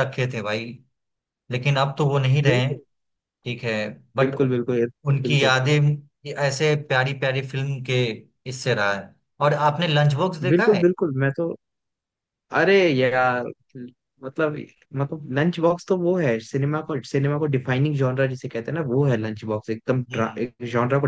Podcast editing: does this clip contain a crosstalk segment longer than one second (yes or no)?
no